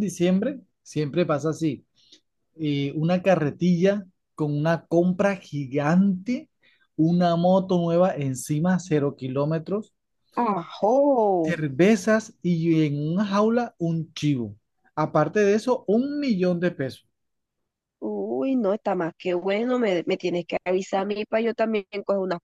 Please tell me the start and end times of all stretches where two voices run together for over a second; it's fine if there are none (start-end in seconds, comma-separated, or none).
none